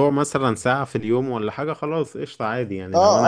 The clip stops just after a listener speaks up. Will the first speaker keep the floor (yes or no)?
no